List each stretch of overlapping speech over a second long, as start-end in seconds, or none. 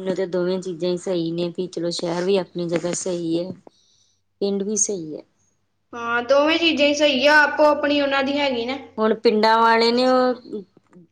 none